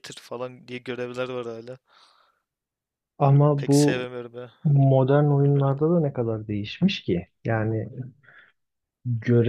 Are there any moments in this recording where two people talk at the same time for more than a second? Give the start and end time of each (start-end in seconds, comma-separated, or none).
none